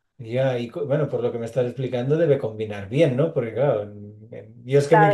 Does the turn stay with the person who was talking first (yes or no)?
yes